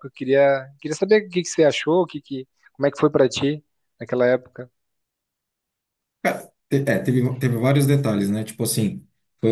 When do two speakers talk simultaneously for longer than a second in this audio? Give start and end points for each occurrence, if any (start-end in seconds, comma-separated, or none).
none